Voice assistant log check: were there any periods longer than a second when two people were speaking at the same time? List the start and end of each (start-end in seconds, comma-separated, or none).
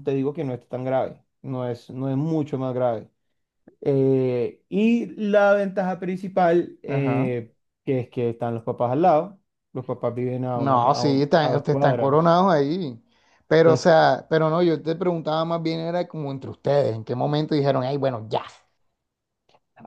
10.6-12.4